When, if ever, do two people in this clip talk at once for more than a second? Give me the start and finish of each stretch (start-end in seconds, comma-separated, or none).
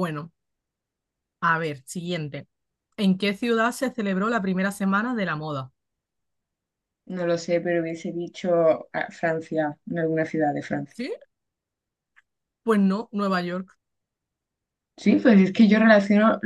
none